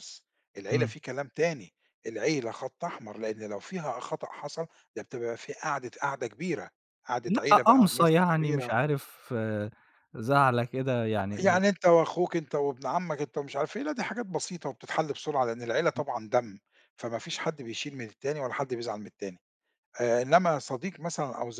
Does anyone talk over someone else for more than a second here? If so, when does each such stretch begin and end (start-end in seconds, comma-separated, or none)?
7.2-8.7